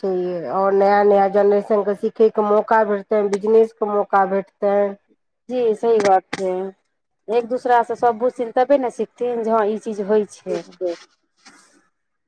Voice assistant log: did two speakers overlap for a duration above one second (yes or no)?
no